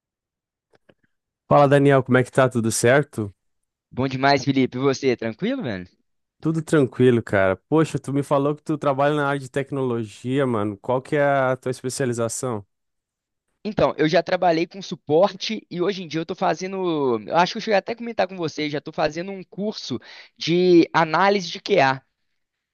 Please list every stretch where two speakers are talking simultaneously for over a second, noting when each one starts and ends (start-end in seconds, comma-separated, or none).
none